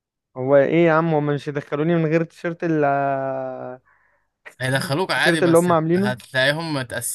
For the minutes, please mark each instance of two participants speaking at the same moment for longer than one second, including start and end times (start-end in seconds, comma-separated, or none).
4.8-6.2